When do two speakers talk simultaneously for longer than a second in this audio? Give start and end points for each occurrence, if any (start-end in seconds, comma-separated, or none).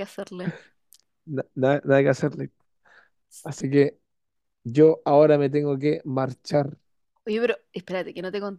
none